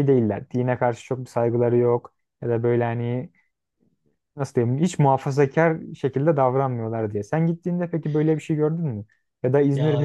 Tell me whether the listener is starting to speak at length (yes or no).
yes